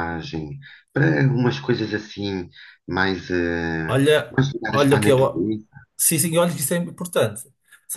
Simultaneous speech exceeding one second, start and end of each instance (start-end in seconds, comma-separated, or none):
3.9-5.5